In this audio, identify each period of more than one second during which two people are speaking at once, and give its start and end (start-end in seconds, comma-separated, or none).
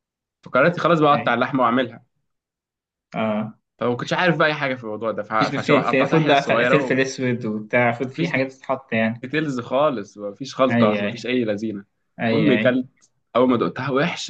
5.4-7.0